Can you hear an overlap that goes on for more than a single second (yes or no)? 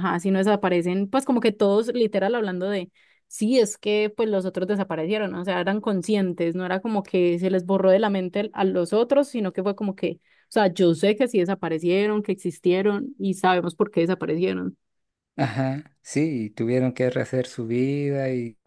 no